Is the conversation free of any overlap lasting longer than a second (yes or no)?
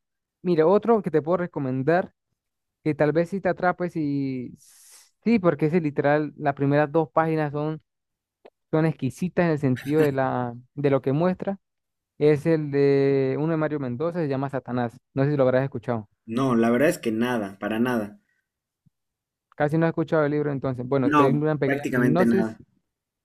no